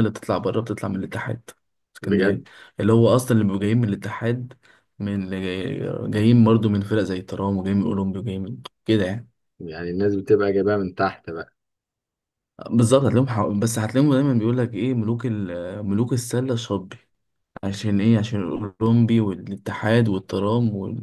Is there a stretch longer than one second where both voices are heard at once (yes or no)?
no